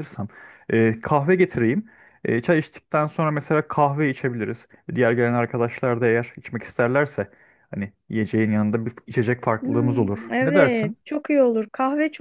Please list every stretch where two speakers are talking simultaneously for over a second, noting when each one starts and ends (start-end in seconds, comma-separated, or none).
9.6-11.0